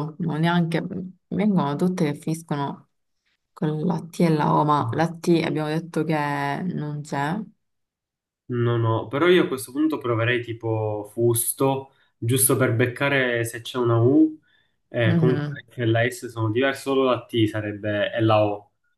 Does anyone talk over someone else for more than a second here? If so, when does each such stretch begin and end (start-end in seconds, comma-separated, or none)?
none